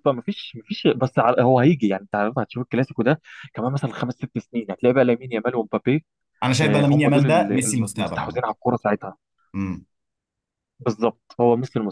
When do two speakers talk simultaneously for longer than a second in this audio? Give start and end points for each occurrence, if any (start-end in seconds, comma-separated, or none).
6.6-8.4